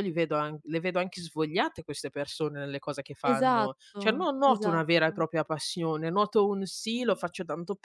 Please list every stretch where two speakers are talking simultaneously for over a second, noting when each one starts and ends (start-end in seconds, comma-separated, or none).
3.3-5.3